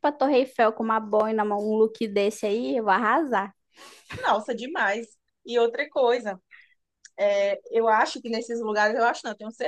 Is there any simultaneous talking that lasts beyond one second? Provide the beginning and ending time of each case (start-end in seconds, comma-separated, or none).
none